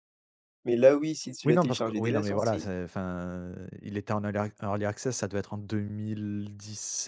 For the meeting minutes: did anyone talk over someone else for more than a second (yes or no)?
yes